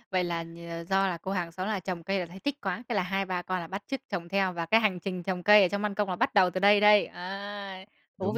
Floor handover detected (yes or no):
yes